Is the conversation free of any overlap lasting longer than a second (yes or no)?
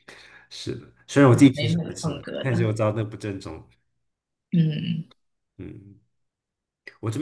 no